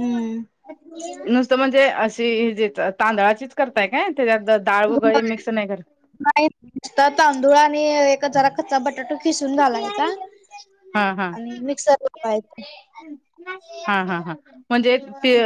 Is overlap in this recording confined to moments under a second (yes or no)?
yes